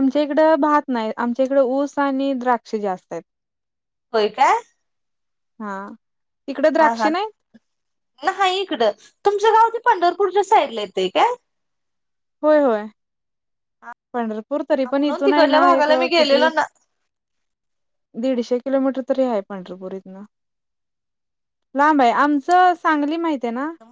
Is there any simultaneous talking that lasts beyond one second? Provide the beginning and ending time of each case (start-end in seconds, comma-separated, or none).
14.9-16.5